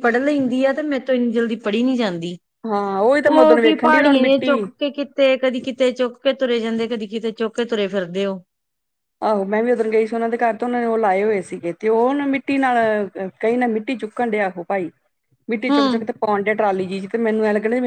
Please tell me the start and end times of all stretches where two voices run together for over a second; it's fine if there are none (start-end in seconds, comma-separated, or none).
3.2-4.6